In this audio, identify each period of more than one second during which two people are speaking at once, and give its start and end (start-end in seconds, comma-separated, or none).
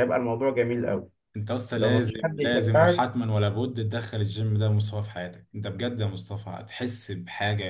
1.8-3.0